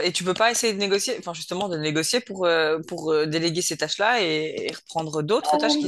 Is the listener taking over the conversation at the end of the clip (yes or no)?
yes